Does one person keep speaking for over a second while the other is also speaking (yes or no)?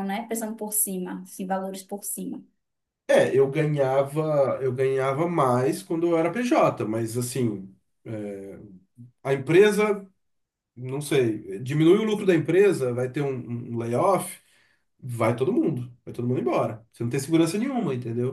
no